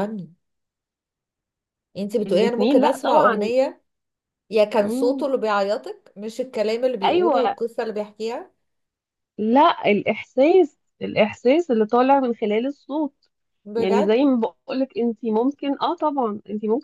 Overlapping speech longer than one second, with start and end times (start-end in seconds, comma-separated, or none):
2.3-3.5